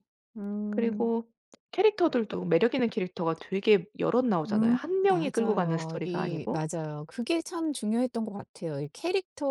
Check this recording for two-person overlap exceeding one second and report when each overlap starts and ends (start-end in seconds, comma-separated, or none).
4.4-6.7